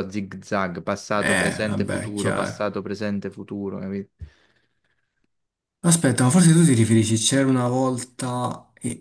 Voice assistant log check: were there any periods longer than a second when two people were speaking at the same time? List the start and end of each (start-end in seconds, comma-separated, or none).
1.2-2.6